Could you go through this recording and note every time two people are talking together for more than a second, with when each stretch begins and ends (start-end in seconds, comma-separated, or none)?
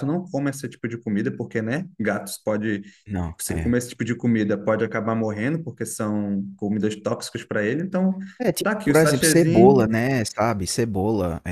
8.6-9.9